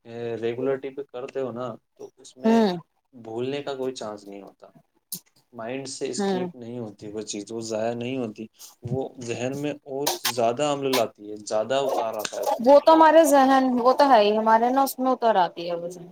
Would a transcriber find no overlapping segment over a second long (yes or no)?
yes